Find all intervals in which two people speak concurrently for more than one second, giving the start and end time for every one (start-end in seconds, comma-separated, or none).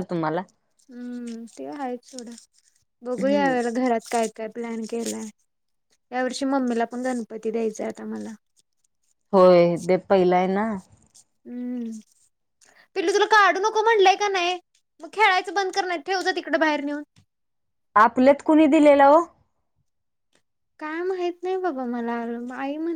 none